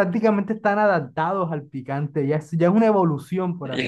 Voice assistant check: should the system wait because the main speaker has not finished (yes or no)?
no